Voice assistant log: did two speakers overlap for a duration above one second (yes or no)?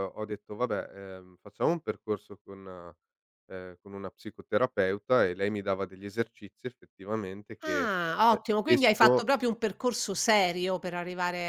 yes